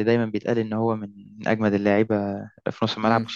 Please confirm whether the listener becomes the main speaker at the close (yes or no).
yes